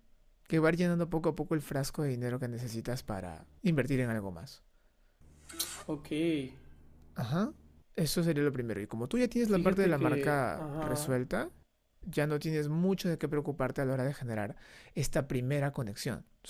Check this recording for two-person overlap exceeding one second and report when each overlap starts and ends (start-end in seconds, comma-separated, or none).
9.5-11.2